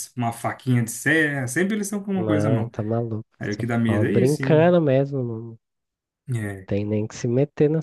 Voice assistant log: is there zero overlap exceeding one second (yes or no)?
no